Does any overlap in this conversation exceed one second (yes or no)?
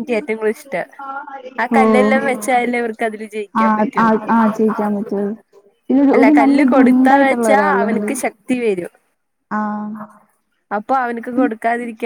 yes